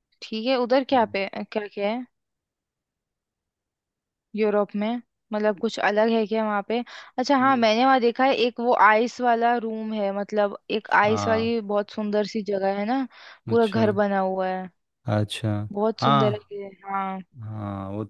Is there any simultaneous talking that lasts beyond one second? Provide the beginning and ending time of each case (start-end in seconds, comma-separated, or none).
none